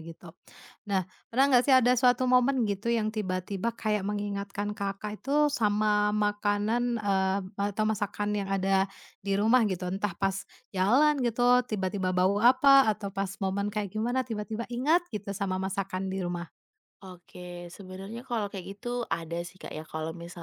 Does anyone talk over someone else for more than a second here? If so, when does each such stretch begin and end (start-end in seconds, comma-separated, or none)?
none